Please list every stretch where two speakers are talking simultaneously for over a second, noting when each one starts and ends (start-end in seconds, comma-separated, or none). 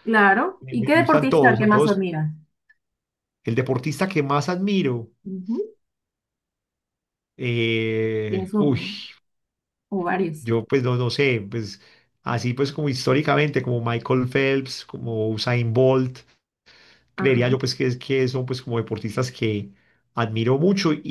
0.6-2.0